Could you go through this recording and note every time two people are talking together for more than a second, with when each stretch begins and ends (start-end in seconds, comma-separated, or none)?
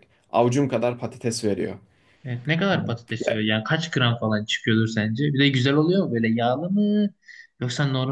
none